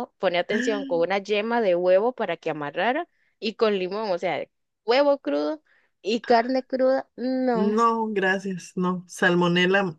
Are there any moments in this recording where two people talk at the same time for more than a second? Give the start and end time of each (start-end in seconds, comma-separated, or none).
none